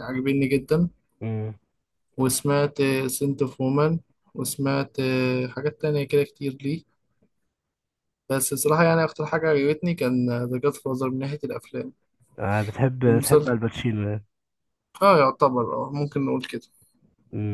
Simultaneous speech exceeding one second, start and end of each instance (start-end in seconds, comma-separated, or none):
none